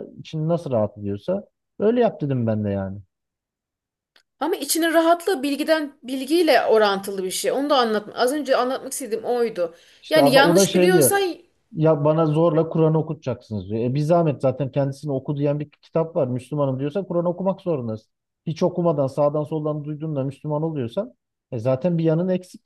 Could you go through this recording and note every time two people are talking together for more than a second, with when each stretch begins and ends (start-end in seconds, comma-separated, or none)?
10.0-11.2